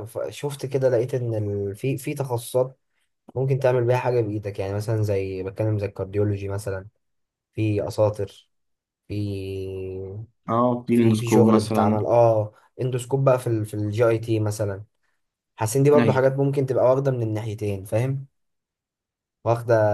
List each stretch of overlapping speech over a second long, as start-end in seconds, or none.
10.9-12.1